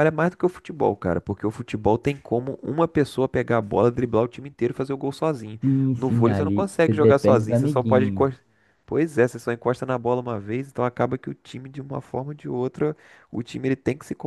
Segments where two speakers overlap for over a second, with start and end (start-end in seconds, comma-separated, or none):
6.0-8.3